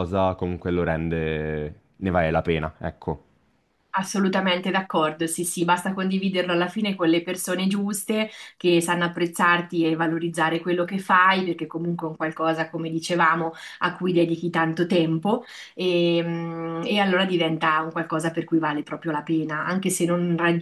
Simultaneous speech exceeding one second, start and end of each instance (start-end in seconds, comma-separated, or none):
none